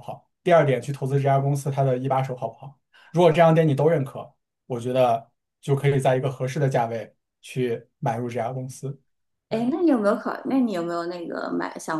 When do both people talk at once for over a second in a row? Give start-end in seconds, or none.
none